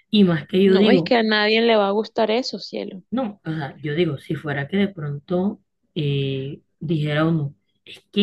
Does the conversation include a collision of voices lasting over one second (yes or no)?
no